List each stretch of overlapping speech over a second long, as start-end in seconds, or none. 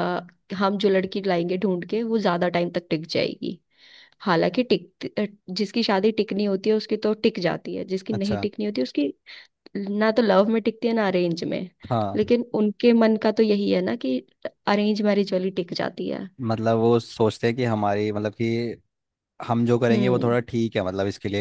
none